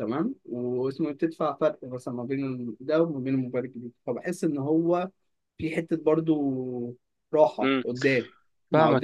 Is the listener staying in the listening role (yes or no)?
no